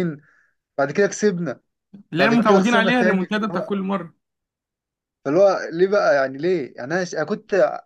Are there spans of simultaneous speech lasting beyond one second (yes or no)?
yes